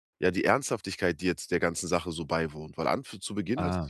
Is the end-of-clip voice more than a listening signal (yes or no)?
no